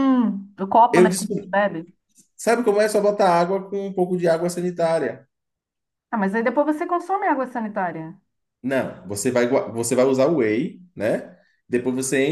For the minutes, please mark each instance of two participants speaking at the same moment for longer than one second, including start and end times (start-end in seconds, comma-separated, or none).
none